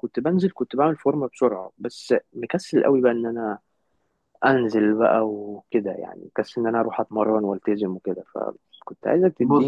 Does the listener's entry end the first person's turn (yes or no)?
no